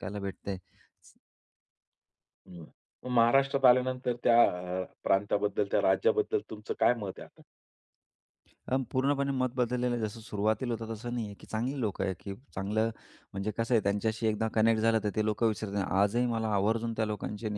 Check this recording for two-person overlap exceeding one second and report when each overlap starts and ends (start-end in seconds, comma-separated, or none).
none